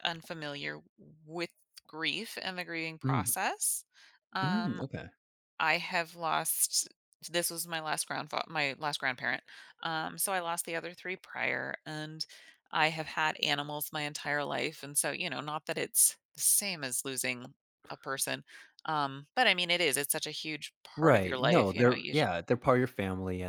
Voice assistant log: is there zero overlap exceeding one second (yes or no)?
no